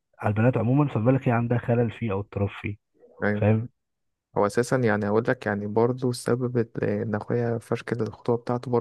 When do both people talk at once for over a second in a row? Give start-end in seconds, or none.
none